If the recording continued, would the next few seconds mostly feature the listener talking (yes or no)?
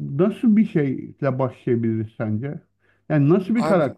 no